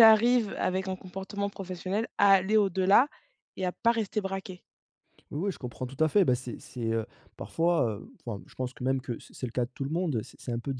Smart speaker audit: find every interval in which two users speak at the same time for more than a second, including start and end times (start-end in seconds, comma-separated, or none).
none